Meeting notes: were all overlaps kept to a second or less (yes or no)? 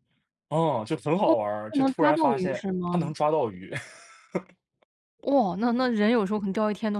no